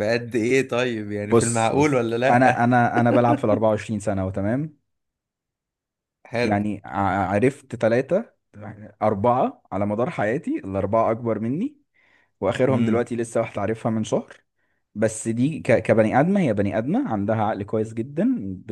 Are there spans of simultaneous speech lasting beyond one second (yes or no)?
yes